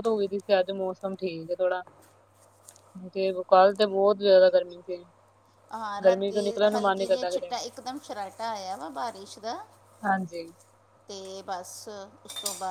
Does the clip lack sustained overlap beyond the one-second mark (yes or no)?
no